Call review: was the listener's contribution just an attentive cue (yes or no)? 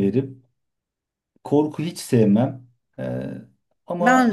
yes